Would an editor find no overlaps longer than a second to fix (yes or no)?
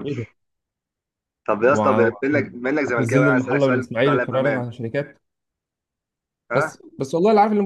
no